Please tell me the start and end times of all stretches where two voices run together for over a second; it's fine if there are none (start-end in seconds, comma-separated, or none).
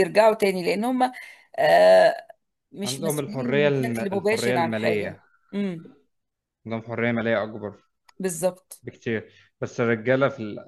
2.8-5.2